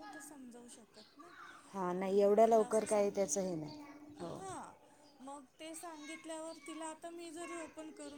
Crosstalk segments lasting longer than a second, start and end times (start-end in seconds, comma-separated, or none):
2.0-3.6